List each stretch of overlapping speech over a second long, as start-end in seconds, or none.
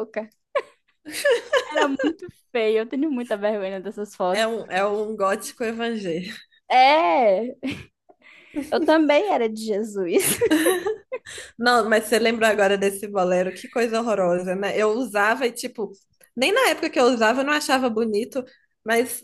none